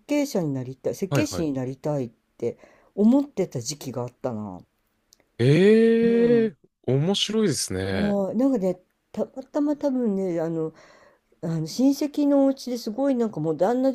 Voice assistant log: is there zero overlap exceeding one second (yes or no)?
yes